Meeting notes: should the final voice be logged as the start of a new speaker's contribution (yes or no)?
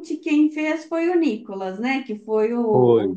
no